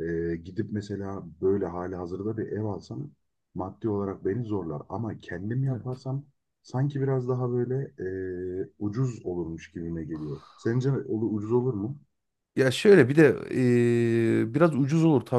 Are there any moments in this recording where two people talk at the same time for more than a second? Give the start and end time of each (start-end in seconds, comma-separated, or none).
none